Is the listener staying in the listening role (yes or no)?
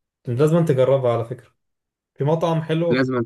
yes